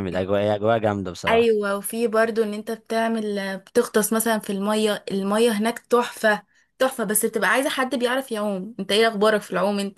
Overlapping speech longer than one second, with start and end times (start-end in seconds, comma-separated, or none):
none